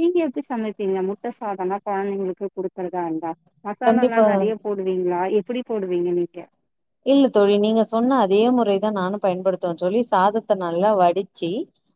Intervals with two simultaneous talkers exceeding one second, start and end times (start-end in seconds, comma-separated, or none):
none